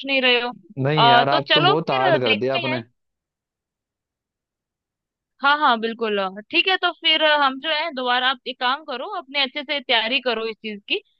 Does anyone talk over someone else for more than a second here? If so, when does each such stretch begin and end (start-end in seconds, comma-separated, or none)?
1.0-2.8